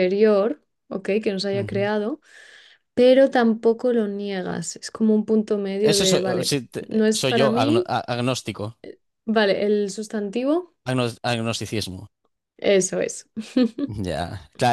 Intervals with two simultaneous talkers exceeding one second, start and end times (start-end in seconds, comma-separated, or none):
5.8-7.9